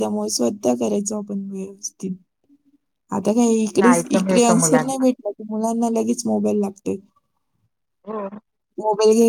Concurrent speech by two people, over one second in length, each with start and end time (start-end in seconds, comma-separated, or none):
3.7-5.0